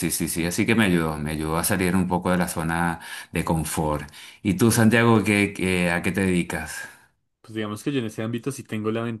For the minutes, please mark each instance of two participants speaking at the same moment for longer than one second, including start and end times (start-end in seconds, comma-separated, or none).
none